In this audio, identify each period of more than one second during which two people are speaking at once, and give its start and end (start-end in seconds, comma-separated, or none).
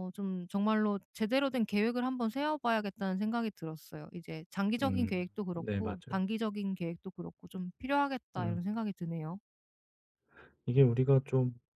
4.8-6.2